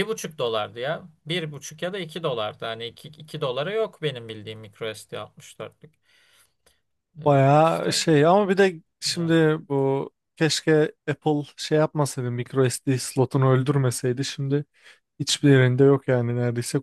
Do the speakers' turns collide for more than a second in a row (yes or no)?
no